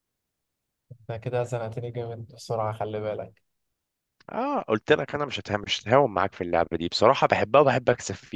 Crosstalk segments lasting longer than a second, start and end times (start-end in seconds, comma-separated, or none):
none